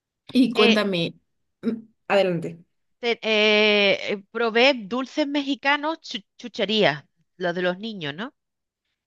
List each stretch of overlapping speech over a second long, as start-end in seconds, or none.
none